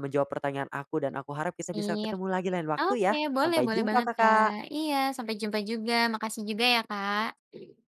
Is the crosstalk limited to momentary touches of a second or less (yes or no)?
no